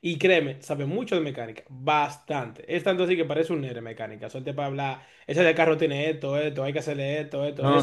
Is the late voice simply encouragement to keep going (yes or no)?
no